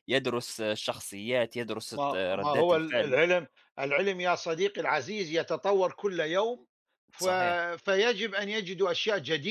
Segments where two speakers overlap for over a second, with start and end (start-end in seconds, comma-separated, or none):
1.9-3.2